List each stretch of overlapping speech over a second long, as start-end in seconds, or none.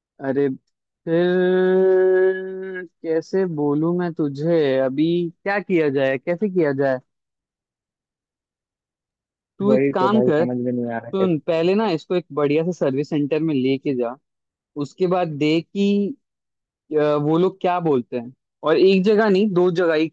9.7-11.7